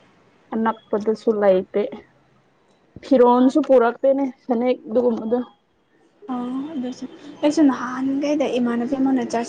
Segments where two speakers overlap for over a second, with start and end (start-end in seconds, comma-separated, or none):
none